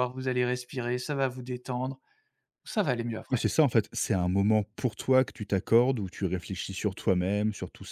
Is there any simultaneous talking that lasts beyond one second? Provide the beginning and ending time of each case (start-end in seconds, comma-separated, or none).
none